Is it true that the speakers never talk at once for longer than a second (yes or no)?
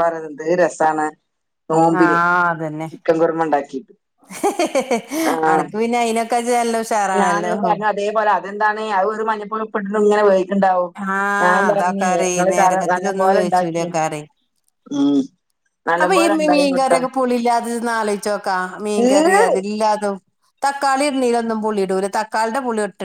no